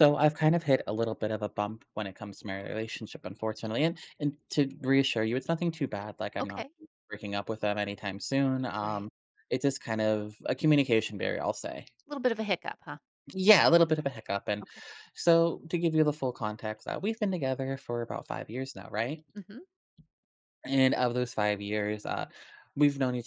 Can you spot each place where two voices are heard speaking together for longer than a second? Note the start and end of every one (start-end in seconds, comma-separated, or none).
none